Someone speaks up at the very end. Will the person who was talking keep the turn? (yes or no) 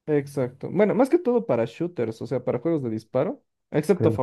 yes